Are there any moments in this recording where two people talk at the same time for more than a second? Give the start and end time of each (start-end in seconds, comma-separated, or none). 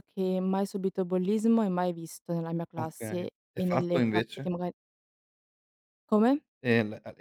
2.8-4.5